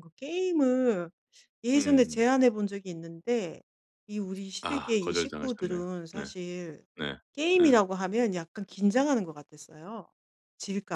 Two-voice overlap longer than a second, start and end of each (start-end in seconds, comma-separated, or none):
4.6-6.3